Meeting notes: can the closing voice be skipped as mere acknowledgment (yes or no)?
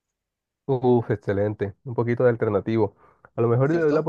yes